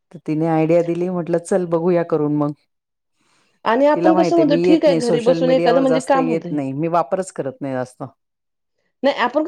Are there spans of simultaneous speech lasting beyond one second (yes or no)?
yes